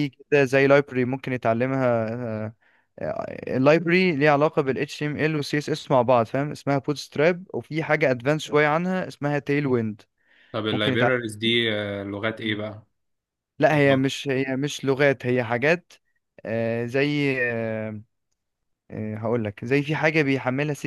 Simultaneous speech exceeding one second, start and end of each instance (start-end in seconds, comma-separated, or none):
none